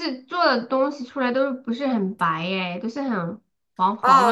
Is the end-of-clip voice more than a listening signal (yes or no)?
yes